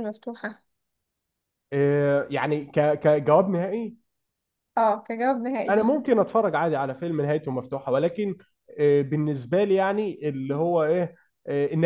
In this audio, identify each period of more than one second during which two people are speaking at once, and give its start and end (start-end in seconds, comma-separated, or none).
none